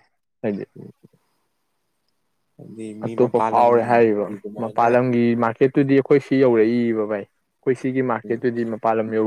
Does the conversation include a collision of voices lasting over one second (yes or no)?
yes